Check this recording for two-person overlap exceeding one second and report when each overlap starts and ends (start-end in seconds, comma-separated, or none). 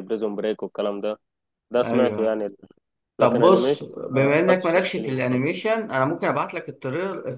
3.2-5.5